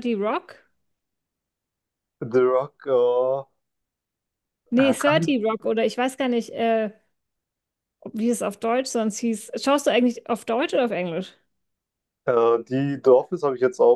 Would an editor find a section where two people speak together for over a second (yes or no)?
no